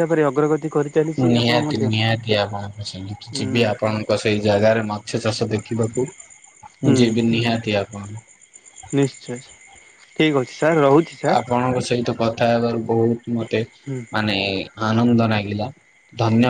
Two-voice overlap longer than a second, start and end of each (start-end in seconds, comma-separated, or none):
none